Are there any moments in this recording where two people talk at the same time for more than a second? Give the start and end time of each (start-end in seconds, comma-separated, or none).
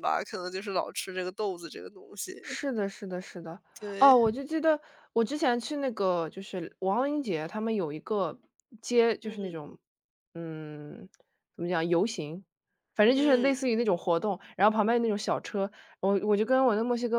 none